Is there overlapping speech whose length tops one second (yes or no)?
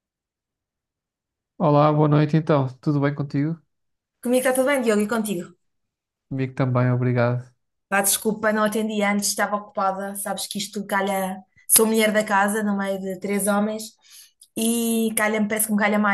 no